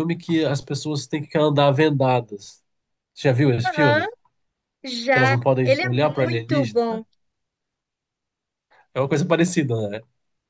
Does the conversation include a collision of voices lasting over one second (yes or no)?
yes